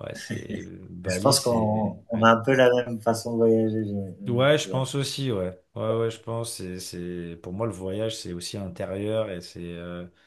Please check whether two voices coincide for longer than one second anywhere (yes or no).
yes